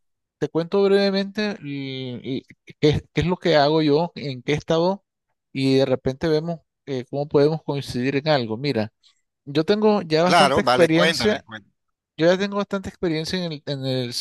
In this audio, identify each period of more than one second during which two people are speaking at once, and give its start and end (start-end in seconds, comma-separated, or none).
10.2-11.4